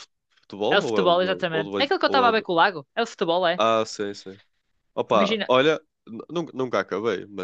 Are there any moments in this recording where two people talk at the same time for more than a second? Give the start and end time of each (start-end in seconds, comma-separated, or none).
0.7-2.5